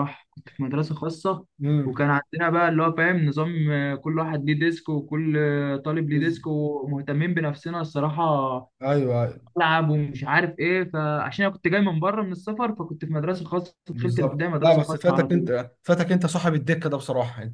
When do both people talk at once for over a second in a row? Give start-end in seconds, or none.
13.9-15.5